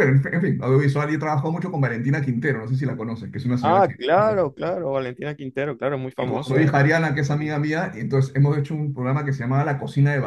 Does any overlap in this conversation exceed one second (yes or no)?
no